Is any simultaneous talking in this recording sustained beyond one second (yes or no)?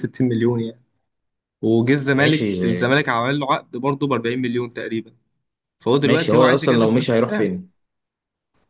yes